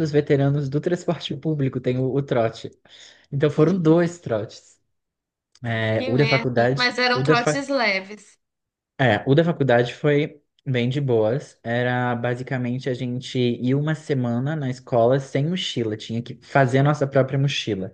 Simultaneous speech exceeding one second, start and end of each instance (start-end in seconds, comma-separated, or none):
6.0-7.5